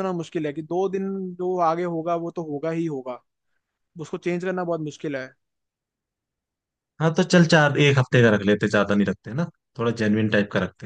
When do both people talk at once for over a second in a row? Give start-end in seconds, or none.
none